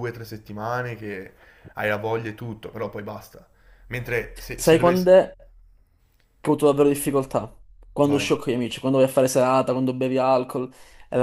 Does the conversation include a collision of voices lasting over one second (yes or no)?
no